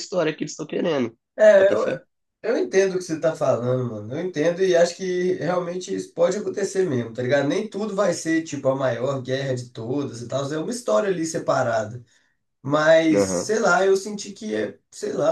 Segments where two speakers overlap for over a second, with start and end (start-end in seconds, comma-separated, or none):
none